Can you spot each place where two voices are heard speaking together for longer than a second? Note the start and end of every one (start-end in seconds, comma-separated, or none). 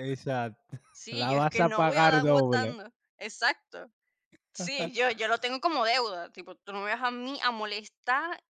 0.9-2.8